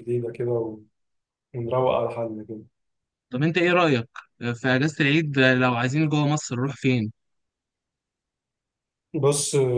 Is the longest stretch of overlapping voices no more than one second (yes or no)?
yes